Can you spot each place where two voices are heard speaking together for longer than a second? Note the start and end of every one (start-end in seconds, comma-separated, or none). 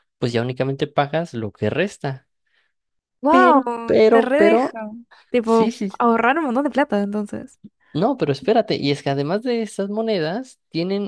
3.3-4.7